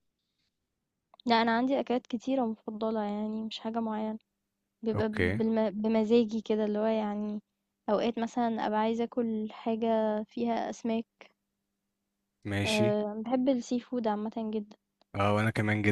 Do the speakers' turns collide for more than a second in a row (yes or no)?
no